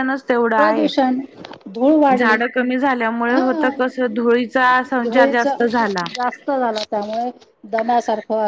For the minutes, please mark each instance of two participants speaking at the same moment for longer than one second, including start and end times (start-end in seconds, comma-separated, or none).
none